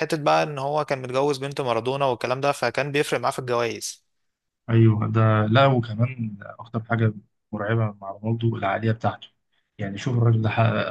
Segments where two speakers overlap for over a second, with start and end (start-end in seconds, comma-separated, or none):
none